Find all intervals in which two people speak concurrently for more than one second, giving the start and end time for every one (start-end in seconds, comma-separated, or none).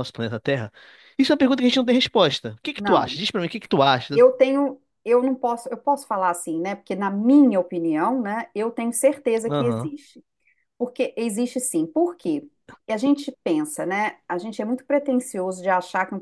none